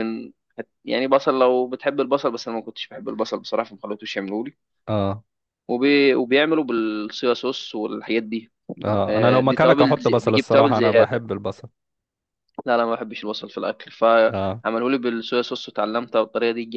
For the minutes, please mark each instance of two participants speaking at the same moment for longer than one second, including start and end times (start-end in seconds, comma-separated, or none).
9.1-11.2